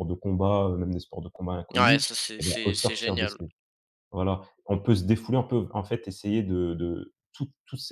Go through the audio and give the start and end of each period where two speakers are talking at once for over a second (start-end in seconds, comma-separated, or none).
1.7-3.4